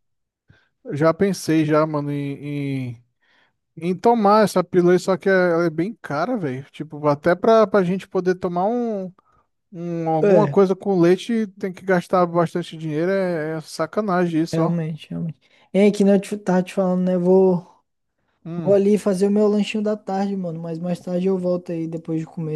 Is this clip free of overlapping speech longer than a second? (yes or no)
yes